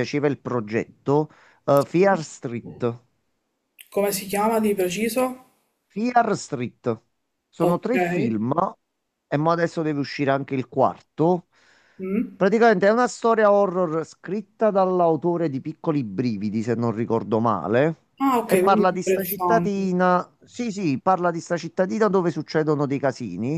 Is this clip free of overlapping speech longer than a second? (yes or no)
no